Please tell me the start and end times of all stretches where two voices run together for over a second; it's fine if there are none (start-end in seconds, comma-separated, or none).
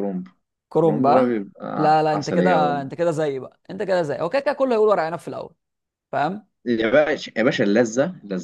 0.8-2.9